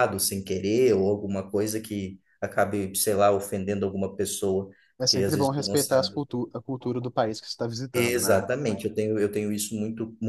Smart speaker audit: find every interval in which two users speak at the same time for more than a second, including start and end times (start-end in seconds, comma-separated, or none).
5.0-6.2